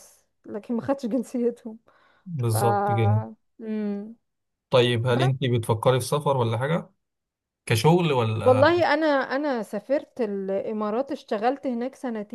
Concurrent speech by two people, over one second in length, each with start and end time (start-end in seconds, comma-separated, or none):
none